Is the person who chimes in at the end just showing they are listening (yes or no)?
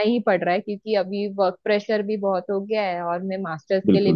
yes